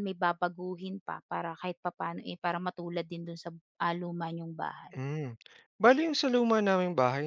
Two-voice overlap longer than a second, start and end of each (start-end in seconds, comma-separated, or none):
none